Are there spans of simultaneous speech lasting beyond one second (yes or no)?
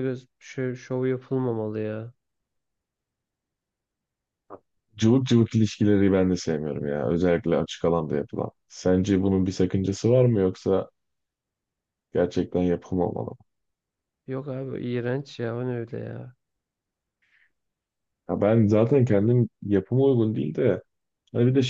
no